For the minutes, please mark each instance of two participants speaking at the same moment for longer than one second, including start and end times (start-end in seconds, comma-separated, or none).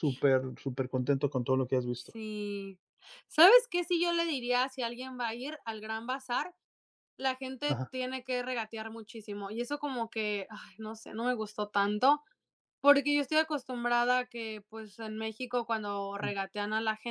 none